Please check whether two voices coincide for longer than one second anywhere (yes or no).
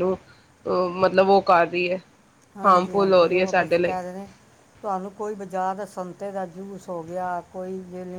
yes